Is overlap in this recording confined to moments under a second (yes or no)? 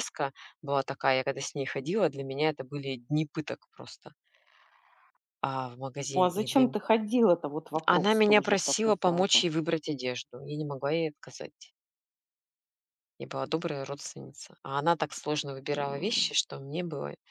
no